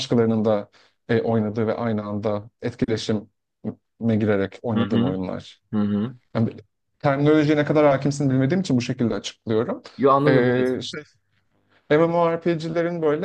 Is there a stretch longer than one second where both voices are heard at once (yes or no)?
no